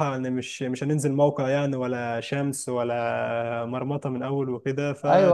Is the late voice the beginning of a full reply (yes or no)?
yes